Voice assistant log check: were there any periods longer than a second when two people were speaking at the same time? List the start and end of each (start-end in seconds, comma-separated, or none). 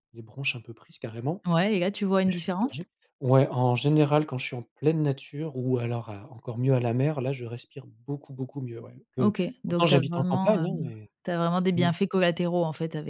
9.2-11.1